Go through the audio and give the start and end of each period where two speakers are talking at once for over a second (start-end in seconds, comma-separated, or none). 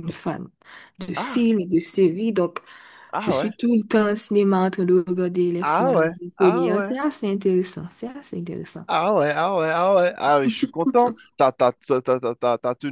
5.6-6.9